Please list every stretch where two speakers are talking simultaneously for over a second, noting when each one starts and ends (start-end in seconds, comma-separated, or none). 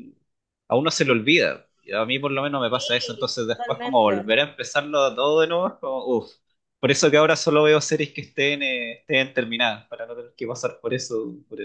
2.7-4.3